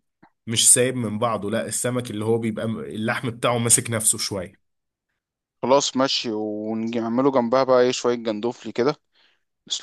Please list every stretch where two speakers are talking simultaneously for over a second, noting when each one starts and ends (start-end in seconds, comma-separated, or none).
none